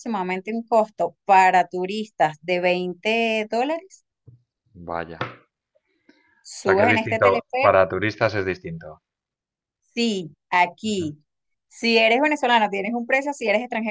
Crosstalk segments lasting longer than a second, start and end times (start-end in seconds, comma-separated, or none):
6.6-7.8